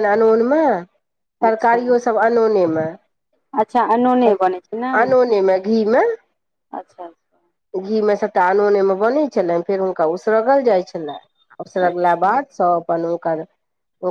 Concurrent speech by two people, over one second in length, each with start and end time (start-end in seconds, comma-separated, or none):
none